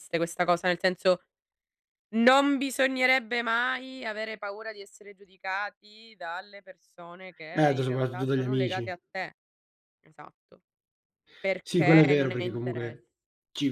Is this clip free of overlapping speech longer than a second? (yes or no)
no